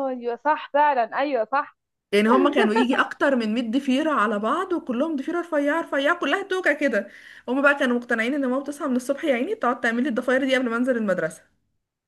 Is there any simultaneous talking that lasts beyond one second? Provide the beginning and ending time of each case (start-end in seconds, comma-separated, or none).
none